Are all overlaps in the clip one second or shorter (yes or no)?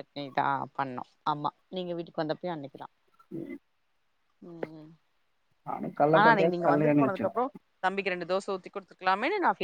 no